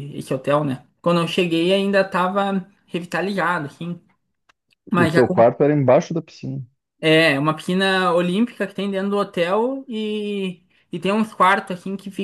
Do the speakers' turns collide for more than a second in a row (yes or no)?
no